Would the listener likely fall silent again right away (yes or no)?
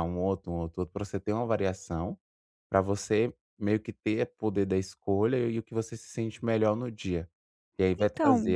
yes